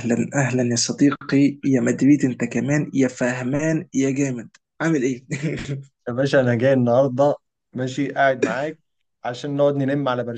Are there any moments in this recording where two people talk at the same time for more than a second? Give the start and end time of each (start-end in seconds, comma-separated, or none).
none